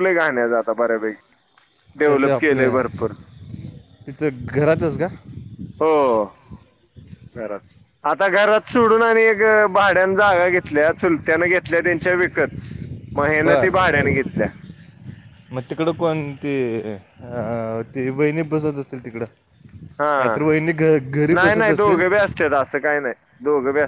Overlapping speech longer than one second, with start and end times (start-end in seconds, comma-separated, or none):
none